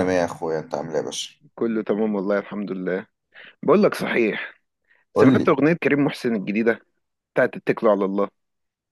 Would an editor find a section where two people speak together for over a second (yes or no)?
no